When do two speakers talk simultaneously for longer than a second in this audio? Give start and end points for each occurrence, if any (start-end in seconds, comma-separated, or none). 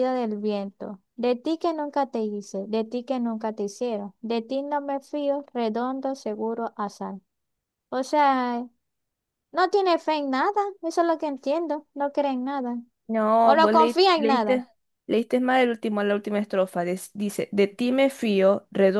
13.4-14.6